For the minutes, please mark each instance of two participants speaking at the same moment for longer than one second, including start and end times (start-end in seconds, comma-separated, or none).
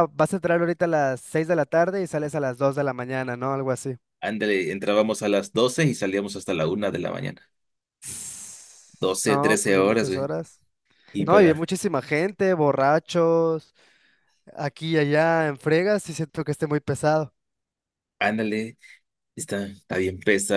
9.0-10.3